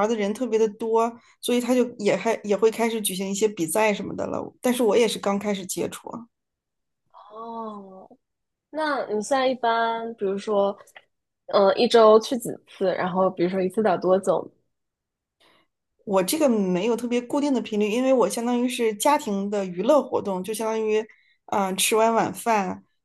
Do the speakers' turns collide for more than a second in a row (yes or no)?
no